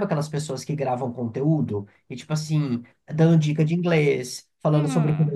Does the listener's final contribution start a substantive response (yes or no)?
yes